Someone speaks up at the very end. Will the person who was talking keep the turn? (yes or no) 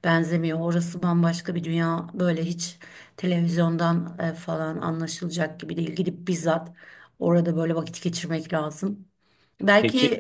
yes